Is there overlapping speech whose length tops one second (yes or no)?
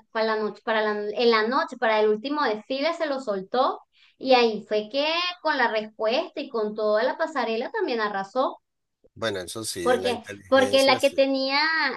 yes